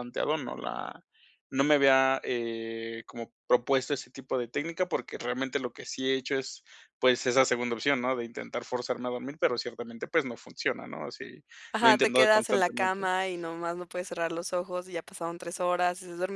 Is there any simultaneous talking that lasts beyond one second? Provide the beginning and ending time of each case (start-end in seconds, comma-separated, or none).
11.8-13.1